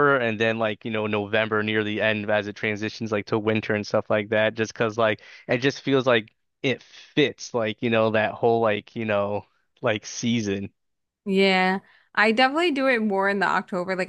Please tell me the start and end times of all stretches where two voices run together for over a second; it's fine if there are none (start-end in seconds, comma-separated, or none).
none